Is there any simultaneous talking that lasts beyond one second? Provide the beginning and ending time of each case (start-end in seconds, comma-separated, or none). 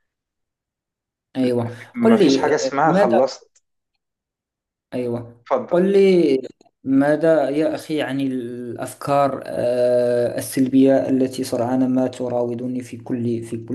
1.6-3.2